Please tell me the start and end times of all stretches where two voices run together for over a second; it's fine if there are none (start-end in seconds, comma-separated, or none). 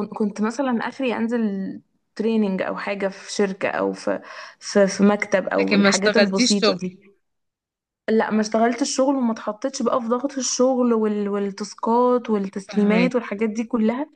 5.6-6.8